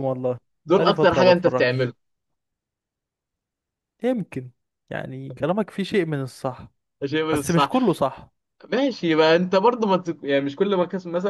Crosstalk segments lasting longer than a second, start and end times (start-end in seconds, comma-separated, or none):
0.7-1.9